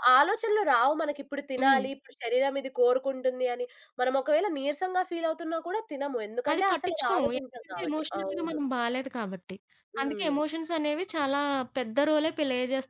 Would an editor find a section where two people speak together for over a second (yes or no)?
yes